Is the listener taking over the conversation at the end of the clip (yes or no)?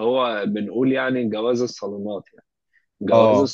no